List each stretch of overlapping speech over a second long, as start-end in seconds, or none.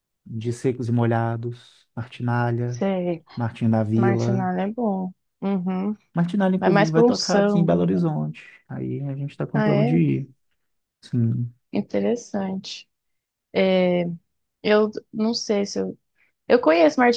6.6-8.1